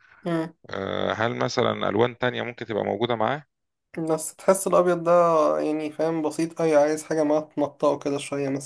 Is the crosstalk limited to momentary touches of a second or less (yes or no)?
yes